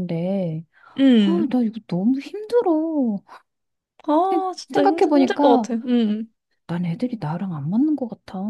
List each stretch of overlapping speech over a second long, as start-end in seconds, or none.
4.2-5.7